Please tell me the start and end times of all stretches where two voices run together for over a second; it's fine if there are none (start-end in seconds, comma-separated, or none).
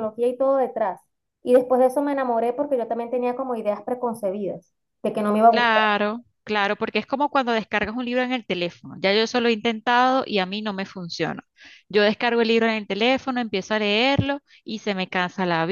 none